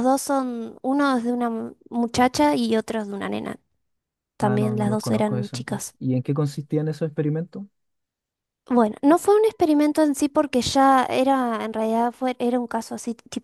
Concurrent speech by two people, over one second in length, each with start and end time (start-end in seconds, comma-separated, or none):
4.4-6.0